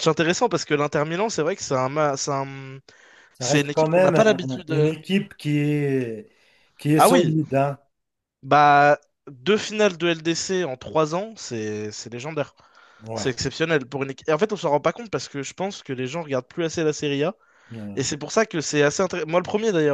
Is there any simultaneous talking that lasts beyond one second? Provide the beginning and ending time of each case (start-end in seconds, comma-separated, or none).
3.4-5.0